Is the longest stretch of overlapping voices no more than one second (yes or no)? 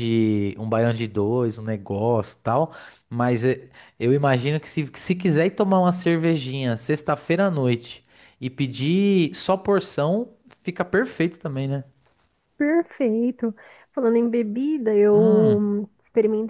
yes